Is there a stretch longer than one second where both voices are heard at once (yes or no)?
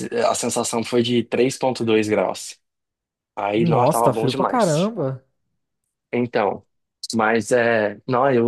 yes